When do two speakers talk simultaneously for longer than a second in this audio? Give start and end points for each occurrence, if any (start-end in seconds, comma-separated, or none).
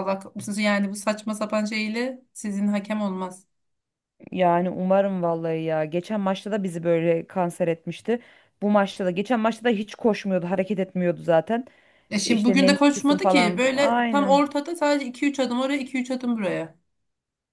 12.2-14.4